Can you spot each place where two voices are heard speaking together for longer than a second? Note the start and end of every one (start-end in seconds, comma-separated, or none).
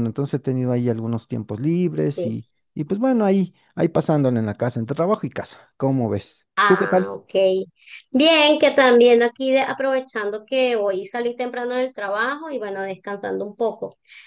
none